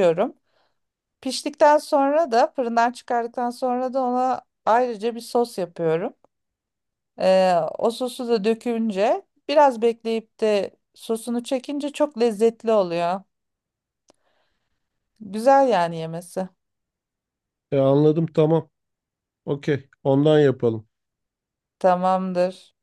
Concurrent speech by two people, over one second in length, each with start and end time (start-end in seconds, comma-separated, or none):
none